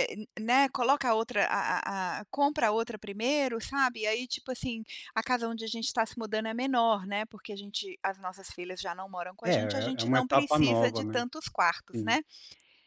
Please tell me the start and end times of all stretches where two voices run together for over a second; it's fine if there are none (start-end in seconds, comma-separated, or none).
9.4-11.2